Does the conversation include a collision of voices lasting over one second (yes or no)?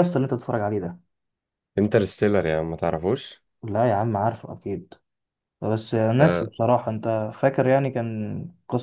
no